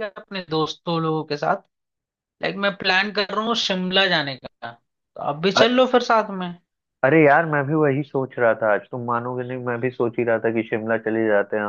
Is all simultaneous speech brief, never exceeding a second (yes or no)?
yes